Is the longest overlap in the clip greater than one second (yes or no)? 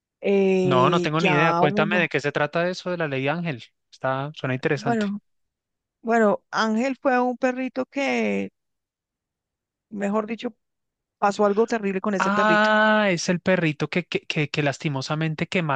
yes